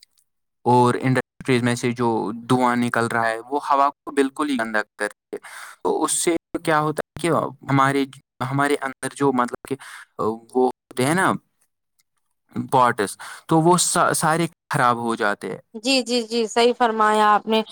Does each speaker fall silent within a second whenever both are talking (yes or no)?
yes